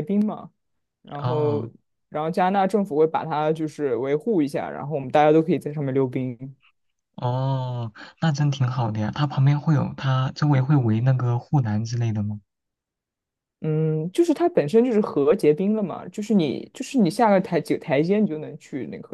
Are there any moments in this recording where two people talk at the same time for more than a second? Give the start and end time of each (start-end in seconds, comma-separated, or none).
none